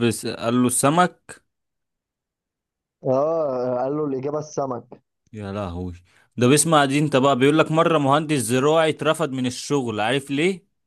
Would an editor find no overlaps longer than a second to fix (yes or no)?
yes